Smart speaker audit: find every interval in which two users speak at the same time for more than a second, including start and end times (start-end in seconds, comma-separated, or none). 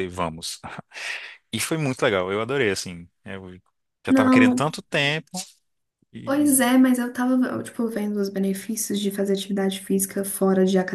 none